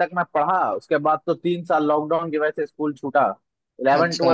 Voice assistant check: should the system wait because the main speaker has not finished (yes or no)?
yes